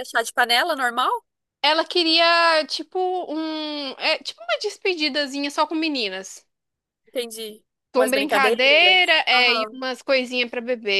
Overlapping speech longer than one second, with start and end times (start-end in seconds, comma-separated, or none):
7.9-9.8